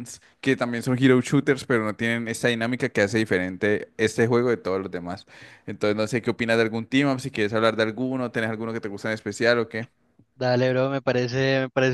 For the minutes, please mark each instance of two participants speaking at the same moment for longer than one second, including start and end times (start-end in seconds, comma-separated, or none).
none